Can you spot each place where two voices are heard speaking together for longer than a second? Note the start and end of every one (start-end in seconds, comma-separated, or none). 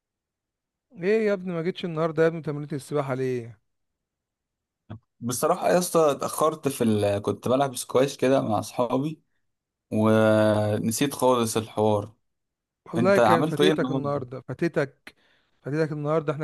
13.0-14.2